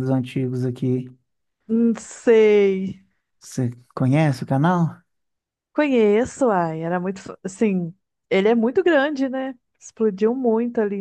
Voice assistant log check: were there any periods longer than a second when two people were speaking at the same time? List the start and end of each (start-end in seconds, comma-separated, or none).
none